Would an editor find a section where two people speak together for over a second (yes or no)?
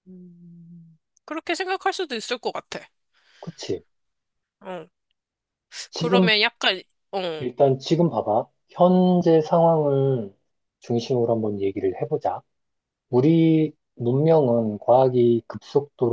no